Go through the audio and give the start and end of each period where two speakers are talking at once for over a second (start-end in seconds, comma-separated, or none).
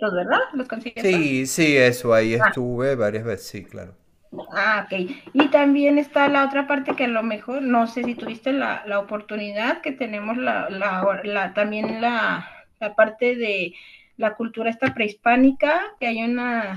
none